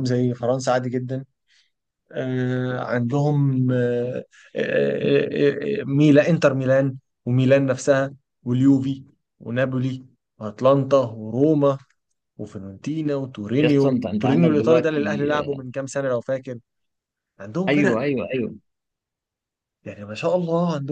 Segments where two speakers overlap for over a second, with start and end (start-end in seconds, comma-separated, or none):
13.6-15.0